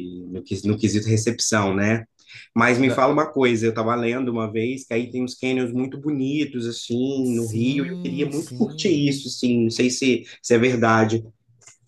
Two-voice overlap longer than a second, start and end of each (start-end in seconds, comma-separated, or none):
7.2-9.1